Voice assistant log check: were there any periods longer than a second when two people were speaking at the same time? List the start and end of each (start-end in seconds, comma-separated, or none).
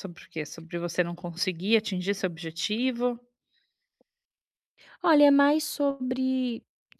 none